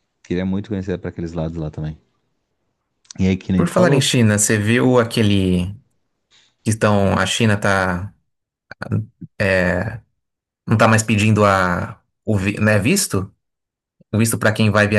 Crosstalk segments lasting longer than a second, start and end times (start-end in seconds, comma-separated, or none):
none